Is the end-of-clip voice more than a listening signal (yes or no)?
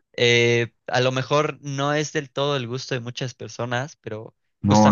yes